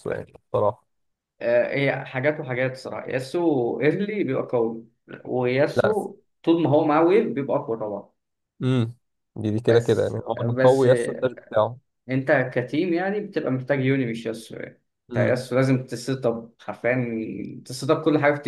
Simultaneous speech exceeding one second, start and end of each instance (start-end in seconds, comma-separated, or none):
9.7-11.5